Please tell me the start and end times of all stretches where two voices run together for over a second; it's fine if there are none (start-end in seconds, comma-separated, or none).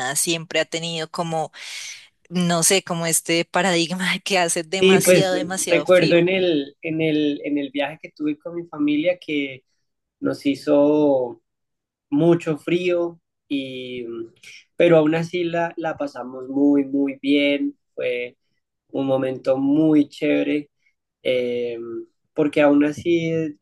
4.8-6.3